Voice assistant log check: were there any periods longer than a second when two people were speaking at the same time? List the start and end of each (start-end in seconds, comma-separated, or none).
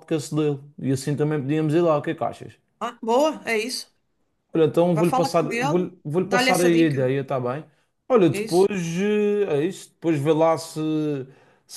4.9-7.0